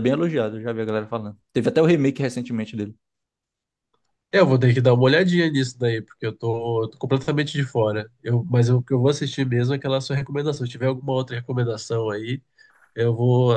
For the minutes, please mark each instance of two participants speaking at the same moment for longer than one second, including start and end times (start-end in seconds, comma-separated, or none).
none